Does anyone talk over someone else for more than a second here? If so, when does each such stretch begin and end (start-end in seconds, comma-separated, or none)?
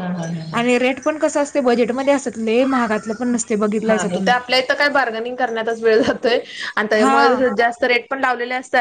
none